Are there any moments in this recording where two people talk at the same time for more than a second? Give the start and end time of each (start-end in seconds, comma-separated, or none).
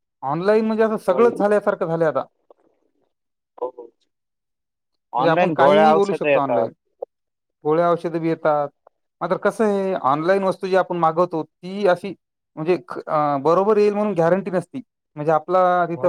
5.2-6.7